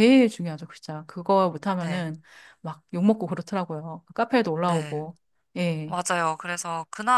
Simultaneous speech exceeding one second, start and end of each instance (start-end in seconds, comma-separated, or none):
none